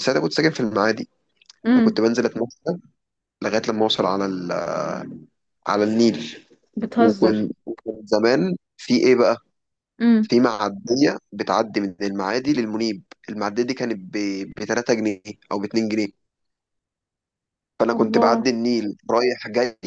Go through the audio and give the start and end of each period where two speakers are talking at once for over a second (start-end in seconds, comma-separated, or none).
none